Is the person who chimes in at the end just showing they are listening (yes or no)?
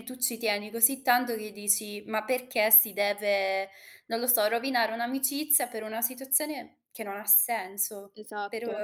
yes